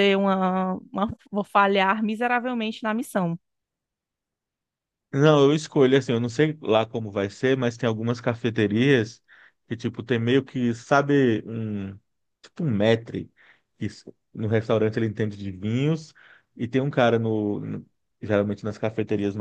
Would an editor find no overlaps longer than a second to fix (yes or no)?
yes